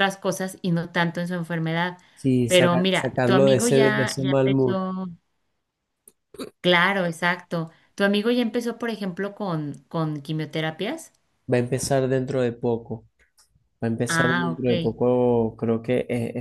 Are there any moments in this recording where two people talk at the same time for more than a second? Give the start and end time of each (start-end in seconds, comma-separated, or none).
2.5-4.8